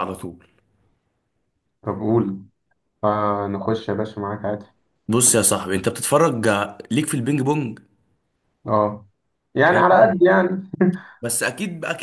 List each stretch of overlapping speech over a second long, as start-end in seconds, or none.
none